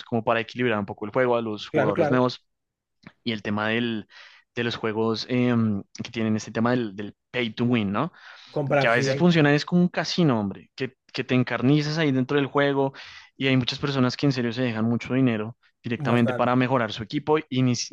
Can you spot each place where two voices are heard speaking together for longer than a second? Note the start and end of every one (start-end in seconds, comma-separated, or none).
none